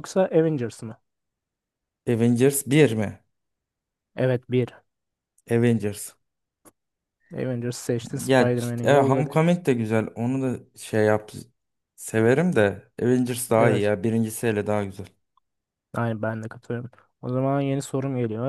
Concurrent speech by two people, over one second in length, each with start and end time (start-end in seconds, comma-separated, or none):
8.2-9.5